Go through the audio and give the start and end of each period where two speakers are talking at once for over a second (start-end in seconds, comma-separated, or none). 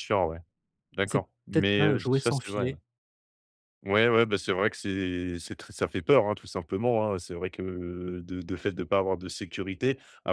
1.1-2.8